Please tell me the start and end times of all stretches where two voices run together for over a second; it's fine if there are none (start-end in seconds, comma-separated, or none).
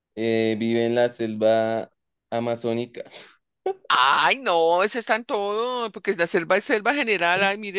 none